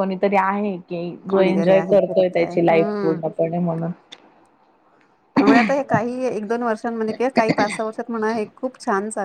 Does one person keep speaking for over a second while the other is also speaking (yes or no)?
yes